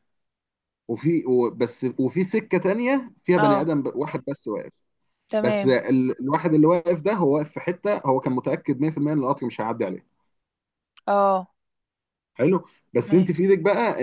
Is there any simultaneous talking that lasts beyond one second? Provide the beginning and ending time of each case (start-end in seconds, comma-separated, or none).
none